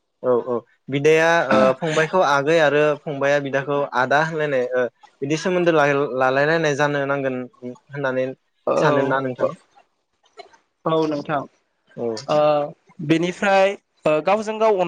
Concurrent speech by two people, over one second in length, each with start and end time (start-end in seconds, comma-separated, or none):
none